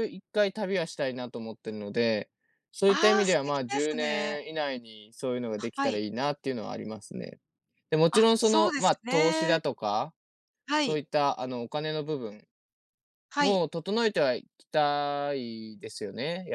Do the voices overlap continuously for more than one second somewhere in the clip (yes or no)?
yes